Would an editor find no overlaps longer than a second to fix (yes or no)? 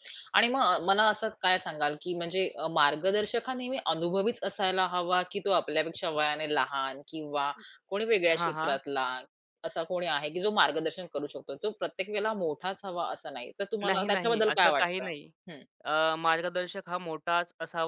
no